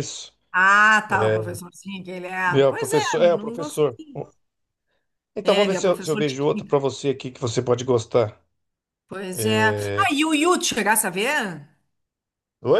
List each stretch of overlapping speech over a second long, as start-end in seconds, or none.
2.6-4.0, 5.4-6.8